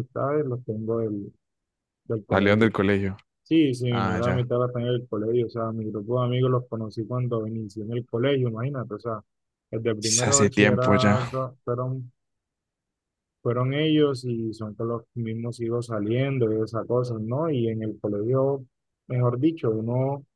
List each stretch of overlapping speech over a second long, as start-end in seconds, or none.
10.0-11.2